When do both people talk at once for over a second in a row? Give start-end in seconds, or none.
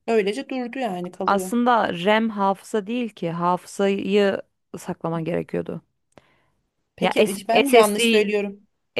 7.0-8.2